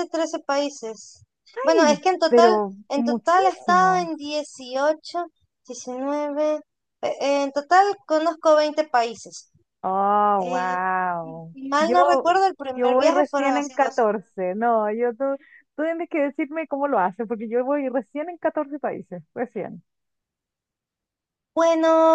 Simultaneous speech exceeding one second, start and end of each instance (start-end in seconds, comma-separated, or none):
1.6-4.1, 12.7-14.0